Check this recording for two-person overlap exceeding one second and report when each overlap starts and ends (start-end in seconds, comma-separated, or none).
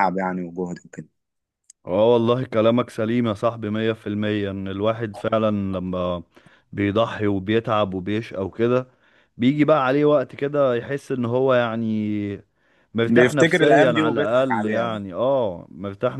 13.1-15.0